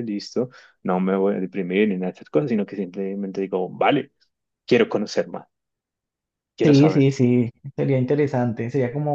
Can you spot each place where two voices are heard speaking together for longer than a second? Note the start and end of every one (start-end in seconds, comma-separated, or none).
none